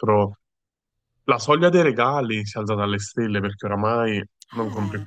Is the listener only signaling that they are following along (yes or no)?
yes